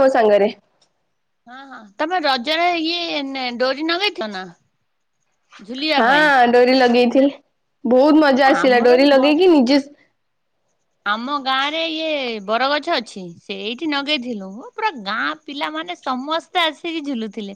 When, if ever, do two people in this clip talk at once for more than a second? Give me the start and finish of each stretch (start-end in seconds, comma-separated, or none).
none